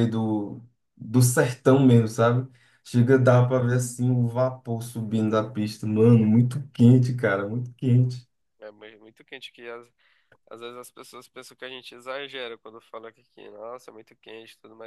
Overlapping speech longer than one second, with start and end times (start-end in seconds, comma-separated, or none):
none